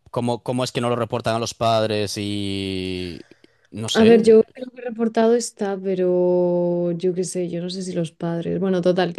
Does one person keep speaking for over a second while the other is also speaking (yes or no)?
no